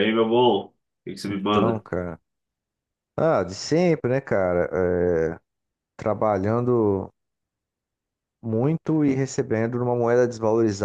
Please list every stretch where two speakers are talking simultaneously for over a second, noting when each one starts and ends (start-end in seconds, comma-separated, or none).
none